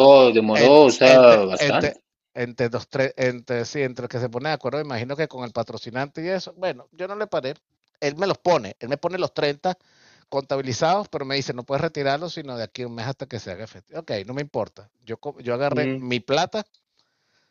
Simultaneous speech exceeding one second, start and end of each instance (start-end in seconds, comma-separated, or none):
0.5-2.0